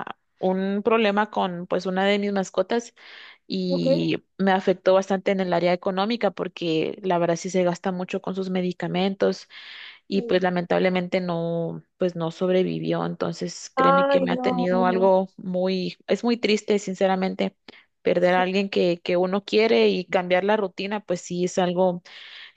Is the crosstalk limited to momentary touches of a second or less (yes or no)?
no